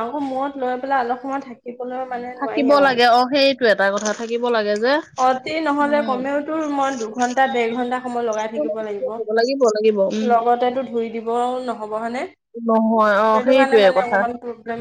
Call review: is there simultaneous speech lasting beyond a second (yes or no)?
yes